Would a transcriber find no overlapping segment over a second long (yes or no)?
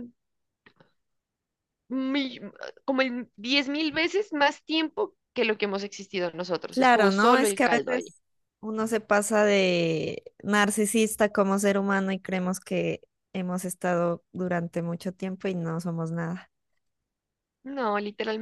no